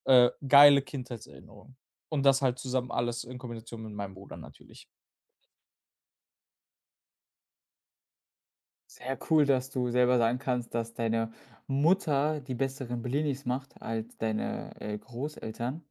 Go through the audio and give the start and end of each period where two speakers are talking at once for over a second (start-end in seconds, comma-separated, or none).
none